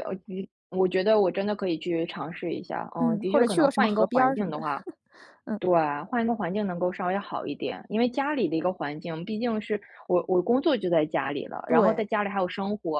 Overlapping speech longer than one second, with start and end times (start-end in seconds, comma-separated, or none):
3.0-4.6